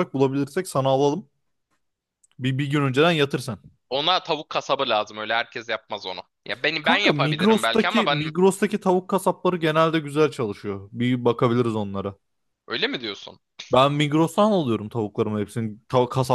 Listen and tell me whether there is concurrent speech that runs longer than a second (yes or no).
yes